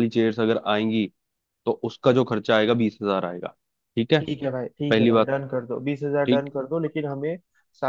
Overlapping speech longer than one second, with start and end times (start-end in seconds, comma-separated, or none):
none